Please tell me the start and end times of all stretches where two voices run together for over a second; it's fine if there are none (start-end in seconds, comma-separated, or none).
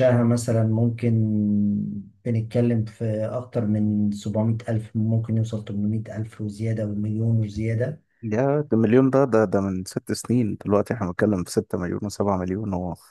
none